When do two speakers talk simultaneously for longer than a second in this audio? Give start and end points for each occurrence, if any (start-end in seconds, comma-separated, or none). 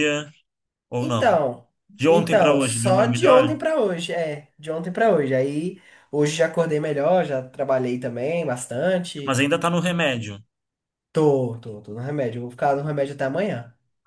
2.1-3.5